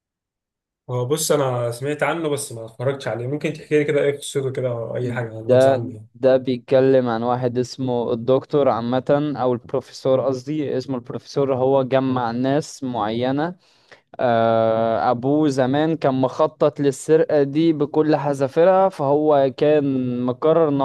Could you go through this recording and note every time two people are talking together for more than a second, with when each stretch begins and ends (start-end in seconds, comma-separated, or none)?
none